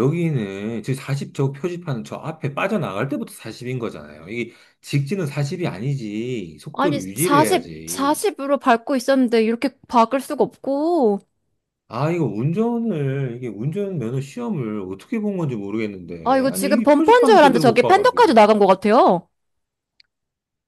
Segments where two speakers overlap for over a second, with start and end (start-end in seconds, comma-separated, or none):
6.7-8.3, 16.2-18.4